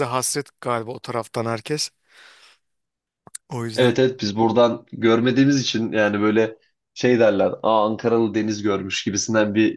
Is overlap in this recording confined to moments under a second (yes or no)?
yes